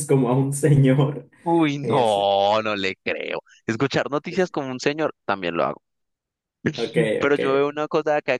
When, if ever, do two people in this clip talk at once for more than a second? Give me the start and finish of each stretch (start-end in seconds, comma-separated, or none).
none